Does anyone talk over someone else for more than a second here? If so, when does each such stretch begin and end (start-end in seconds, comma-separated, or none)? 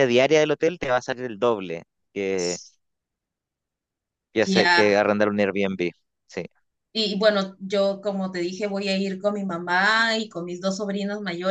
none